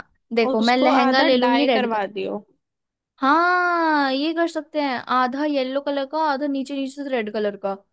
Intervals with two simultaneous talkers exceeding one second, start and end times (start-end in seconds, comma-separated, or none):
0.5-2.0